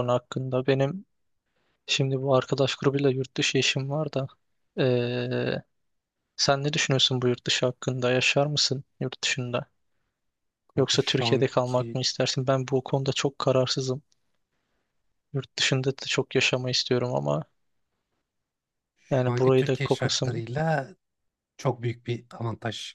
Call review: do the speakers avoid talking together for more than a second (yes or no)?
no